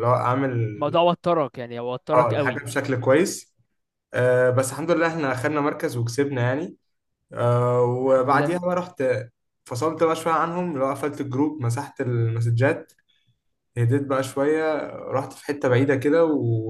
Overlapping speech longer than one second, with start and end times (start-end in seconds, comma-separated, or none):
none